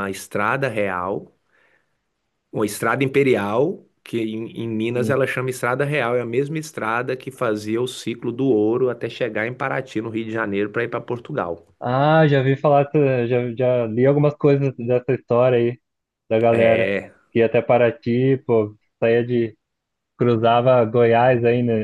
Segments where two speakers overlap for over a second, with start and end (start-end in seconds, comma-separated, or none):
none